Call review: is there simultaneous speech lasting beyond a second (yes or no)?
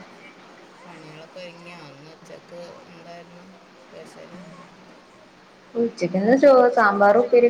no